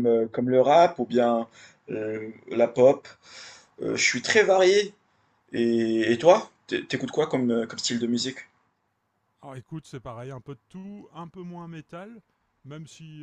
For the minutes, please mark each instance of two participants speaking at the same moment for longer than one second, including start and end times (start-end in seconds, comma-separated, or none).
none